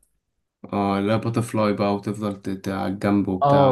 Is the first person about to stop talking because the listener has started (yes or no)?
yes